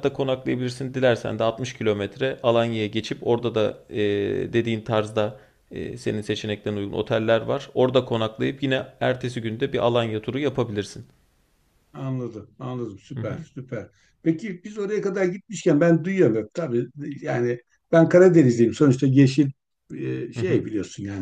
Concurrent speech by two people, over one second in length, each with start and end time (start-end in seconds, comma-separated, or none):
none